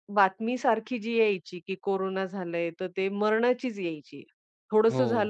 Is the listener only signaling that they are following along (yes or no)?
yes